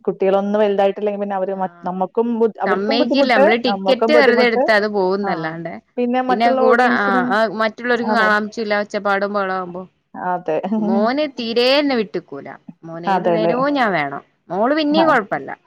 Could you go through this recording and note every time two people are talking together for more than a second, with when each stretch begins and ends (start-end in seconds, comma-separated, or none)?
2.7-4.6